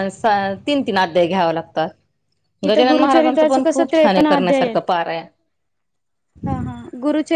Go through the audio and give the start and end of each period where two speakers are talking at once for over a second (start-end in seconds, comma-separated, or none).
2.7-4.7